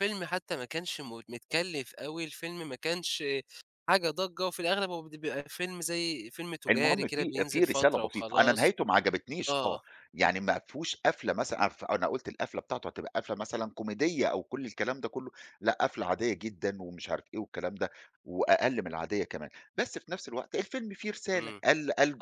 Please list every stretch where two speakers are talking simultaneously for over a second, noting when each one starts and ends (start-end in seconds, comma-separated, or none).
6.7-8.7